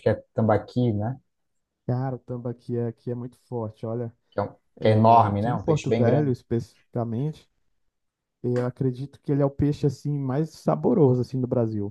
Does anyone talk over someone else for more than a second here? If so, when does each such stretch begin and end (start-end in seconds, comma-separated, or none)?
4.8-6.3